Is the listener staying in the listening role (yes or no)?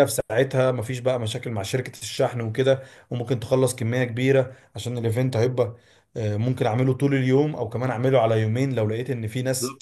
no